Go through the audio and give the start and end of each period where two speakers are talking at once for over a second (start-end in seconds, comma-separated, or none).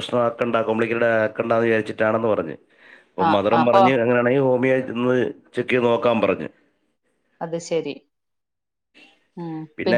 none